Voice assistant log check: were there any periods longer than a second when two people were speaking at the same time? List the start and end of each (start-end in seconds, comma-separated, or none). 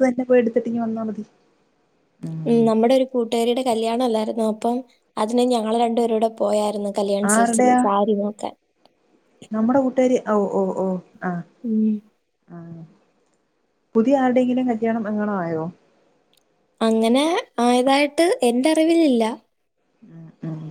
none